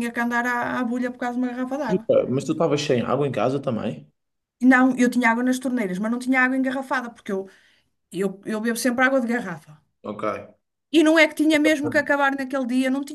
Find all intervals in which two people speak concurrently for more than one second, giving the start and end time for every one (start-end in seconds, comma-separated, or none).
none